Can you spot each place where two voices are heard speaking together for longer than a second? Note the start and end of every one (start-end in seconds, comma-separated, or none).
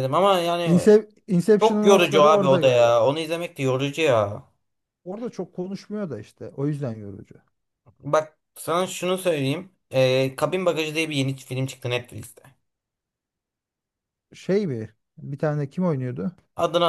1.6-3.0